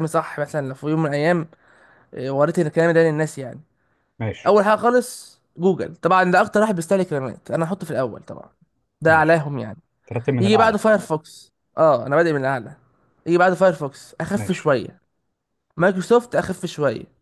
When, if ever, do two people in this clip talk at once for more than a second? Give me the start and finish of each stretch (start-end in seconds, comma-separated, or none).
none